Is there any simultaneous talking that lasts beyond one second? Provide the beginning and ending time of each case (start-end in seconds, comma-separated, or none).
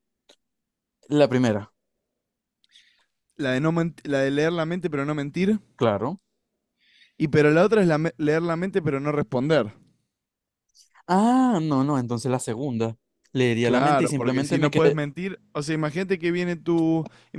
13.6-15.0